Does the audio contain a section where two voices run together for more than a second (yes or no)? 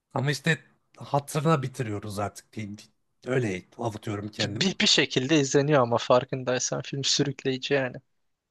no